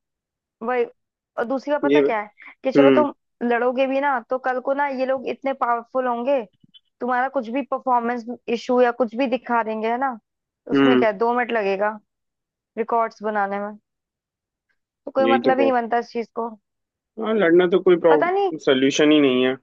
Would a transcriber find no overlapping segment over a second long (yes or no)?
yes